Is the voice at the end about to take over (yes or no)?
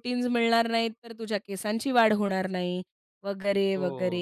yes